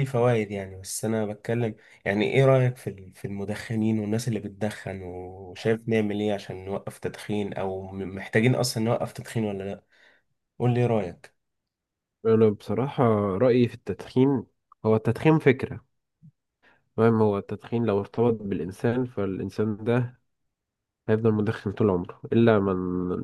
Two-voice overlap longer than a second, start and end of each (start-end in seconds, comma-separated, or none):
none